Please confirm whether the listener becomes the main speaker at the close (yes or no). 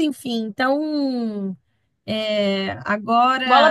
yes